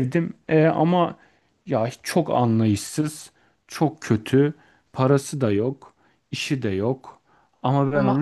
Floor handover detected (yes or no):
no